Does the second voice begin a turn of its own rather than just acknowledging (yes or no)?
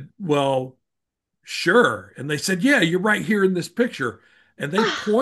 no